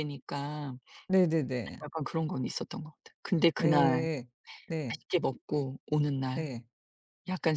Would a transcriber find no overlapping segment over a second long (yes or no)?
yes